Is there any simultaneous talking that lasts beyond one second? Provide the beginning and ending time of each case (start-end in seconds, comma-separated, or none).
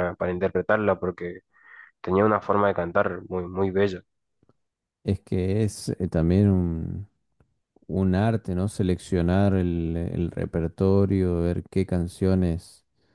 none